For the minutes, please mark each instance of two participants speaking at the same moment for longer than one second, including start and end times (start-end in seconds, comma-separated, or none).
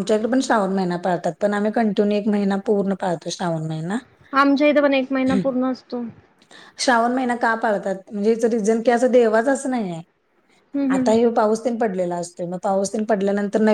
none